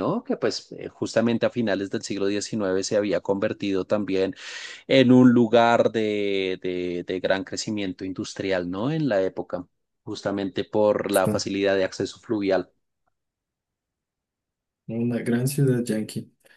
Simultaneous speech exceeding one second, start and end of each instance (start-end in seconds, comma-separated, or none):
none